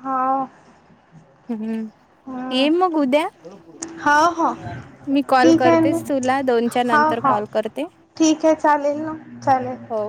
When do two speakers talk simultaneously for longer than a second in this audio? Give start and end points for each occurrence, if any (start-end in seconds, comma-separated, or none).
none